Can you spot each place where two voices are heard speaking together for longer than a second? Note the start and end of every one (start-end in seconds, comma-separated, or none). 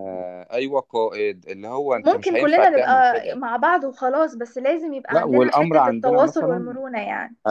1.9-3.4, 5.1-6.8